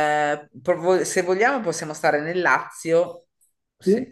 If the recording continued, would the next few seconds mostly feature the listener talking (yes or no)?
no